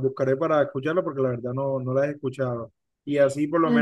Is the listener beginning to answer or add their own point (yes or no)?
no